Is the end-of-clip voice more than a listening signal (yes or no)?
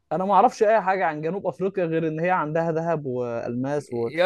yes